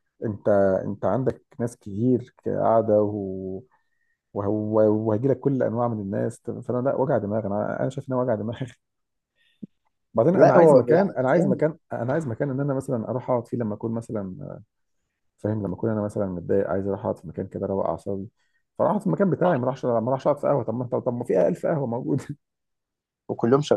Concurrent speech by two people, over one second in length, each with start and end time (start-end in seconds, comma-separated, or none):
10.3-11.6